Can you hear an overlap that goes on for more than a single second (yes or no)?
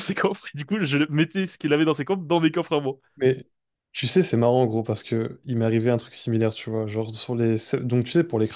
no